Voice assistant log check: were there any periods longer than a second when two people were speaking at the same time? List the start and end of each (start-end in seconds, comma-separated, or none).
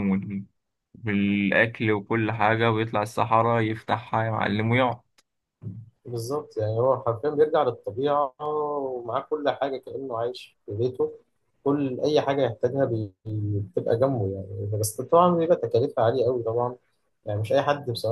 none